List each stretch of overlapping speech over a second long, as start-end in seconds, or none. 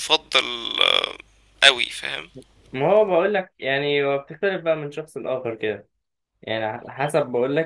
none